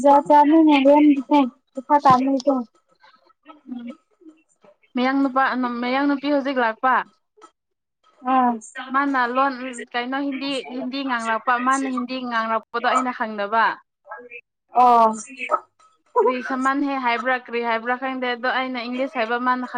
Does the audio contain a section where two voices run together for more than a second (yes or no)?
no